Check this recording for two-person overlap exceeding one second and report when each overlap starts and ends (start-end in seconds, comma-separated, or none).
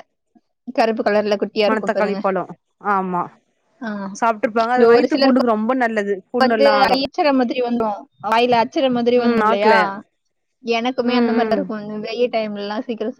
none